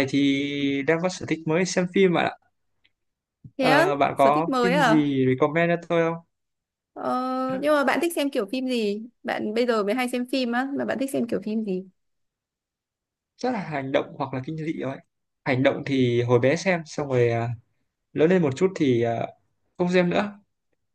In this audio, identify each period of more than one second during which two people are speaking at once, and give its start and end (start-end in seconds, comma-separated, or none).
3.6-5.1